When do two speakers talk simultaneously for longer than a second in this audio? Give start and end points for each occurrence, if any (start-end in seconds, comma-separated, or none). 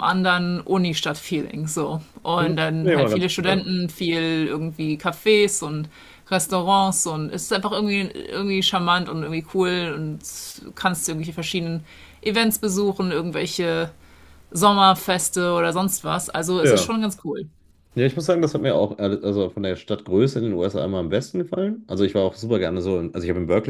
2.4-3.7